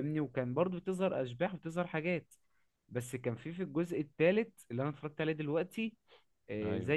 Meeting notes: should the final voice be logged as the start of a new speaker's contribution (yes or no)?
no